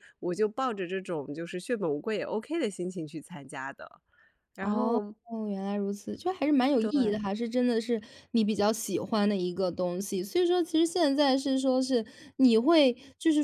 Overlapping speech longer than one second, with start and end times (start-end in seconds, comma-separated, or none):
none